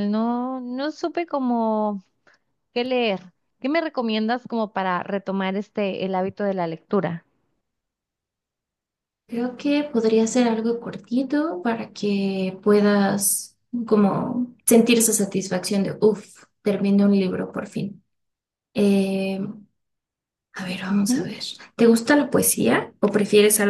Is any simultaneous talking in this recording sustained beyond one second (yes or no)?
no